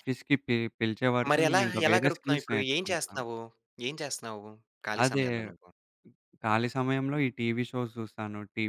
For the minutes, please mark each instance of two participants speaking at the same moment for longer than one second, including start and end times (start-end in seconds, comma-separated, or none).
1.3-3.2